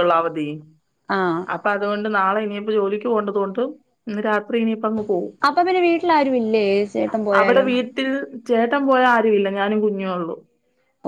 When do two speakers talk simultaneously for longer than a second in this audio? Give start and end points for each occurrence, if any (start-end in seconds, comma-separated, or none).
none